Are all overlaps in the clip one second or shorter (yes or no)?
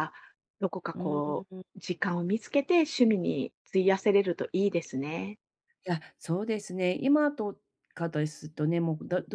yes